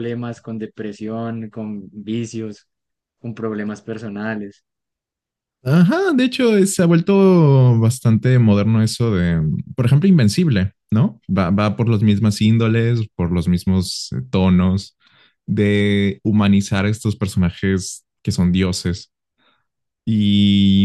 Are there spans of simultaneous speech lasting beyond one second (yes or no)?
no